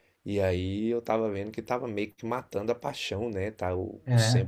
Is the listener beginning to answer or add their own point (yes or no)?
no